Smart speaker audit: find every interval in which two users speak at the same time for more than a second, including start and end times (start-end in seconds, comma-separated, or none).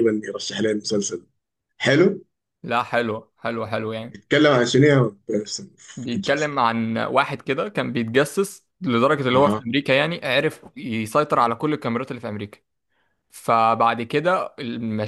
none